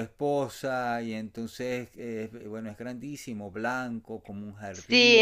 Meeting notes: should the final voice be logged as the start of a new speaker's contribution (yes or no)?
yes